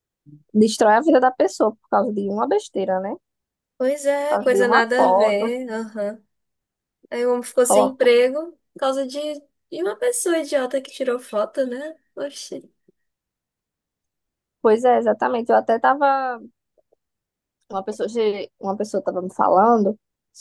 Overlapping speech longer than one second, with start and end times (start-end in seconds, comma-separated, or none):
4.3-5.5